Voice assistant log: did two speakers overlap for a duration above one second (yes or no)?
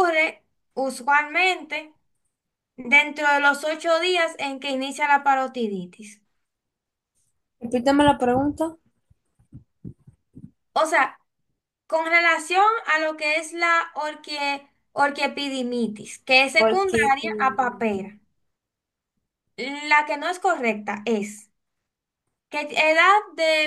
yes